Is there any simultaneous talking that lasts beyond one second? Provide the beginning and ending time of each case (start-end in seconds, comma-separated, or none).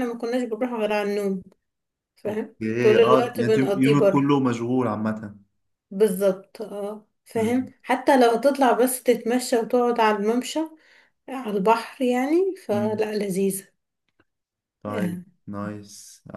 2.3-4.3